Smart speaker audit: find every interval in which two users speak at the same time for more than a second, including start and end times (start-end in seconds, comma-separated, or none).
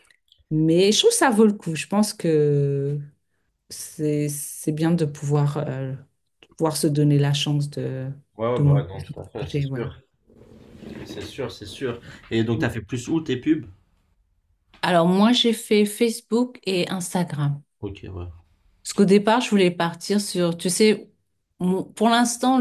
8.6-9.9